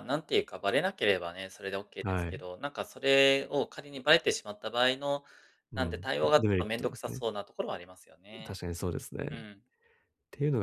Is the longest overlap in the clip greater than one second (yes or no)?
yes